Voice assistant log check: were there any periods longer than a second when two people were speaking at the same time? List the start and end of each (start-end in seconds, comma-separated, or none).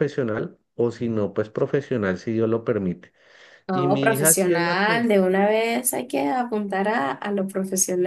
3.7-5.0